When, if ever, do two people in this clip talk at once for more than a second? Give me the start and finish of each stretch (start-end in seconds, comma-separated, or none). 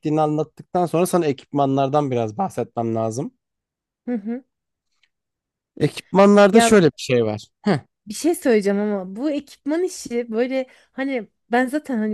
none